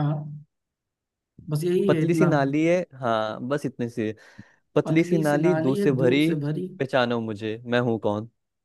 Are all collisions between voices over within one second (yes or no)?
no